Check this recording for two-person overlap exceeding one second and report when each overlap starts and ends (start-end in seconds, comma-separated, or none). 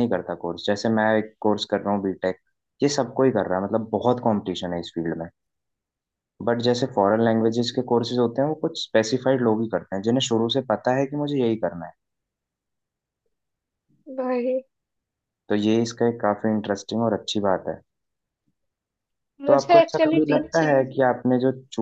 19.5-20.8